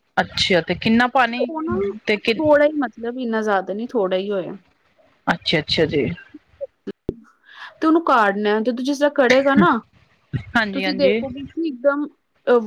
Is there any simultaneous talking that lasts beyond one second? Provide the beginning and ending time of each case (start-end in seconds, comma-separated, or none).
none